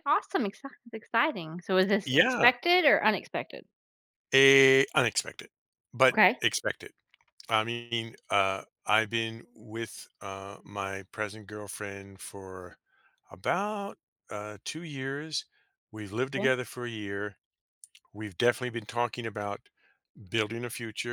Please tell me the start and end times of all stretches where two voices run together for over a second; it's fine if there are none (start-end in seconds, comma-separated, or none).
none